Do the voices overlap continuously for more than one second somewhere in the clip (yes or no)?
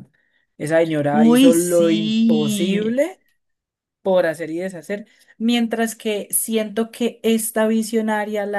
yes